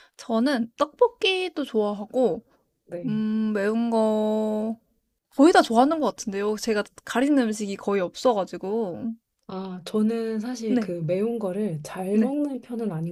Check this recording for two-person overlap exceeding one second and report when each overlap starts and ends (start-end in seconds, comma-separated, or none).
none